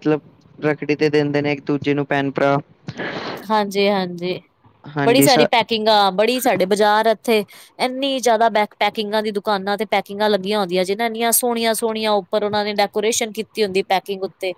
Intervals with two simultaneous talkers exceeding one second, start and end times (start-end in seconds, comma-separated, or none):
none